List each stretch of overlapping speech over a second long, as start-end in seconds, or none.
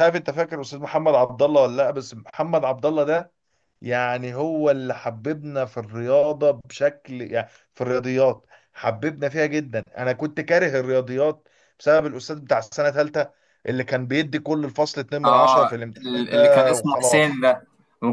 15.2-17.4